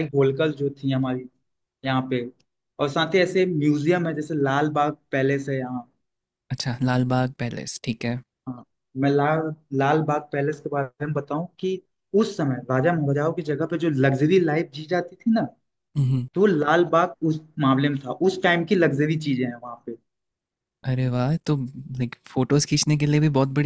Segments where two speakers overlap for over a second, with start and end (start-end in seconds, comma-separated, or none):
none